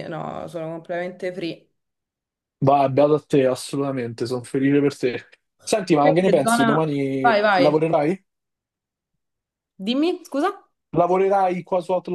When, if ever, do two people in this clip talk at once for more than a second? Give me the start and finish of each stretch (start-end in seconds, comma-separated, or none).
6.0-7.8